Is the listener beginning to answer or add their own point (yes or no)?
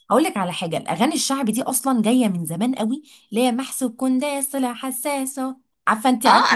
yes